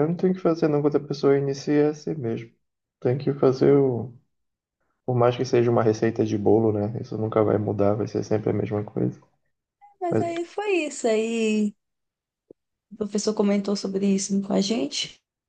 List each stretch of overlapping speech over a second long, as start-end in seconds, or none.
none